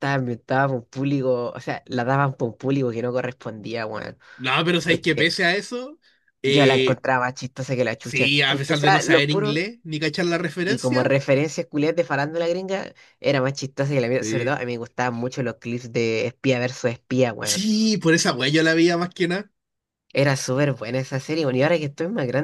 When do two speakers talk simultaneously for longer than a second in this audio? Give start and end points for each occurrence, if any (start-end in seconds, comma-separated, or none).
8.0-9.6